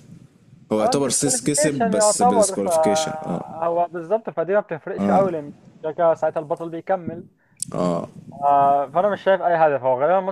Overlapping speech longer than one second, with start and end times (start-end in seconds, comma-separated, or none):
0.8-3.5